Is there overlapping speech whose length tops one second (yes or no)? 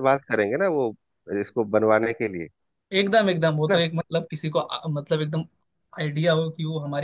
no